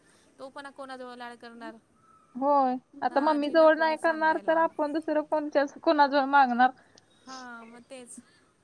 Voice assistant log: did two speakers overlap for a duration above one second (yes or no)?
yes